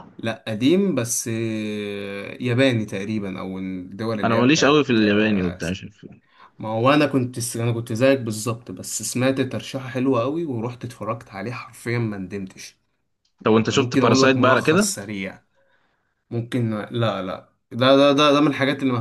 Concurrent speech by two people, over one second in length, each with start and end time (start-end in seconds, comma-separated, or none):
4.2-5.8, 13.7-15.0